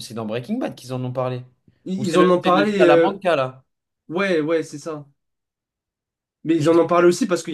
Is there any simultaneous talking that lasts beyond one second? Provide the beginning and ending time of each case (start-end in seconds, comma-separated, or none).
2.0-3.2